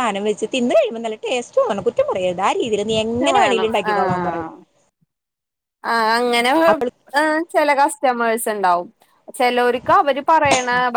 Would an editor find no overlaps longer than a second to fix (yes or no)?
yes